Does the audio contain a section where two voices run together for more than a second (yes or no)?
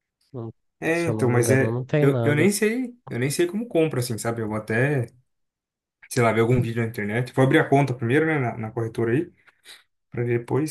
yes